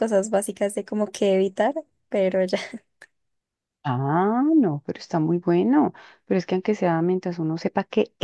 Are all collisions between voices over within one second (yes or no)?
yes